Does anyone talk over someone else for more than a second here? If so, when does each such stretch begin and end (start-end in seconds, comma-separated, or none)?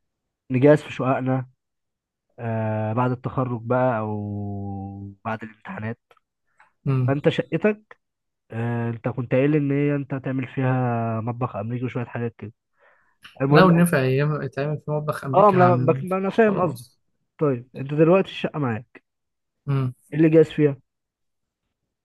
15.3-16.8